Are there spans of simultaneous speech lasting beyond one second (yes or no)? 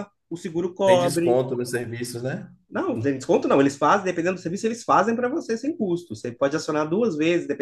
no